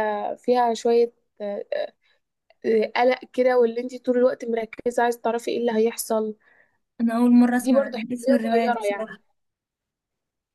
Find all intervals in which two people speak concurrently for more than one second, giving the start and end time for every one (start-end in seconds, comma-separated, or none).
7.6-9.2